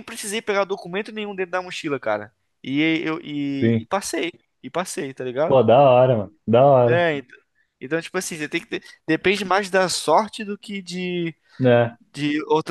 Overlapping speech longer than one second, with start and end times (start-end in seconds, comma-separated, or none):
none